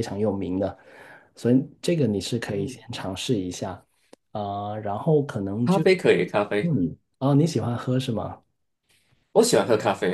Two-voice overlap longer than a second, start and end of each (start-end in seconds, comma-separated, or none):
none